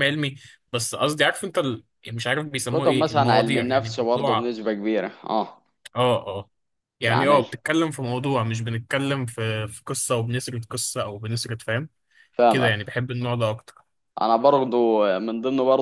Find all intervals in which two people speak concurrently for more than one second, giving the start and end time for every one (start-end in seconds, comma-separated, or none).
2.7-4.5